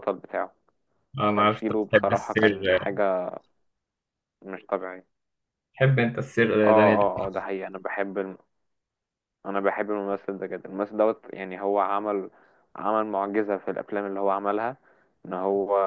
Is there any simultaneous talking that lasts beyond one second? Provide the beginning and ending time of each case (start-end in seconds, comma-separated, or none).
1.3-2.8